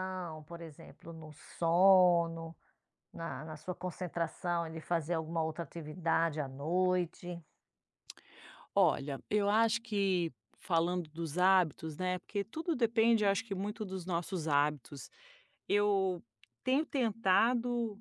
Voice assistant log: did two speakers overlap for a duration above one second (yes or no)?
no